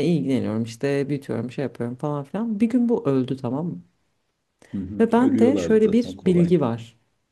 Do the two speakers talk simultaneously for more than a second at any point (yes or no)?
yes